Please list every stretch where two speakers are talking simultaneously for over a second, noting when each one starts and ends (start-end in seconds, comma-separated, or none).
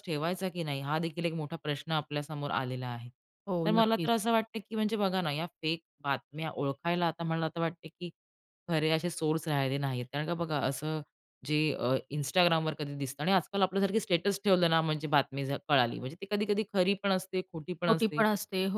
none